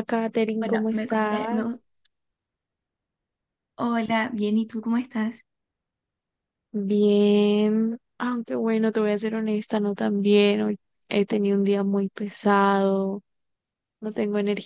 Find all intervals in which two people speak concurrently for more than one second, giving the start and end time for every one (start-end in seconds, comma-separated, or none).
0.6-1.8